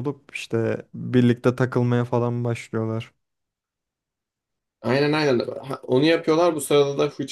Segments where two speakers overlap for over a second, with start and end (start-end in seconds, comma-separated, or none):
none